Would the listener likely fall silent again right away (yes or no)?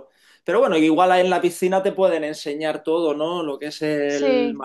yes